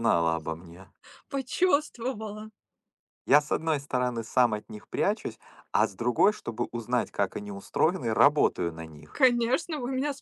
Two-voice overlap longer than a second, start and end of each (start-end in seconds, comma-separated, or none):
none